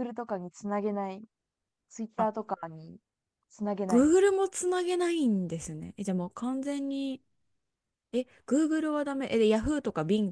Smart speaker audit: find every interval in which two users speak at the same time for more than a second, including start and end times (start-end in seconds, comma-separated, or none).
none